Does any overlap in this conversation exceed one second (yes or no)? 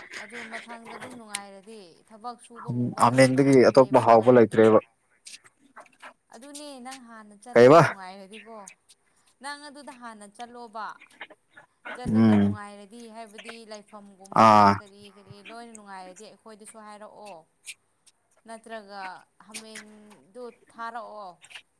yes